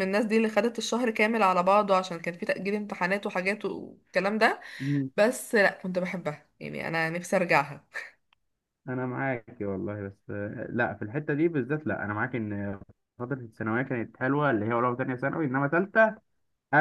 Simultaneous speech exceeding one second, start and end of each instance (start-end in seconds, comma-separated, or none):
none